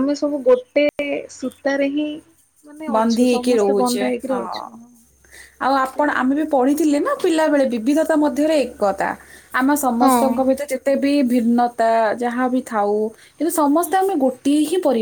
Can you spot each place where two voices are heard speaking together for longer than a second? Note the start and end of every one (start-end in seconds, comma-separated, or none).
3.0-4.6